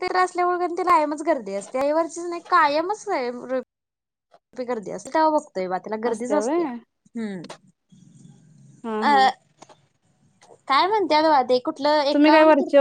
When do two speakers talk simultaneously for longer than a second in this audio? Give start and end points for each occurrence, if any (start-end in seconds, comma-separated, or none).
none